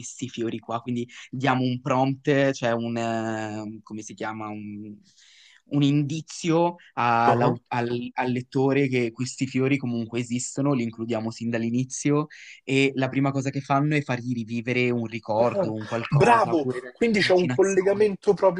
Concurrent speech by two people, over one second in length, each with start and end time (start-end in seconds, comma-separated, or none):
15.4-18.1